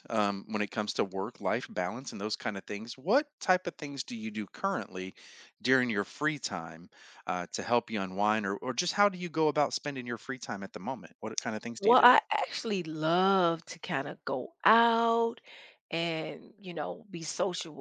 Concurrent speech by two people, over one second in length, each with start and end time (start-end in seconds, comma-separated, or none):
none